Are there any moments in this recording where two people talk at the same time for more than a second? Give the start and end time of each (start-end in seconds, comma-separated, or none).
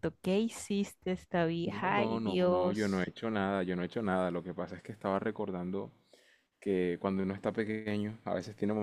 1.6-3.1